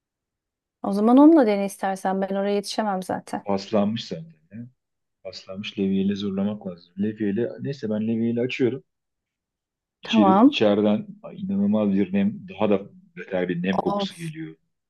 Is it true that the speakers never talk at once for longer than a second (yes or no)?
yes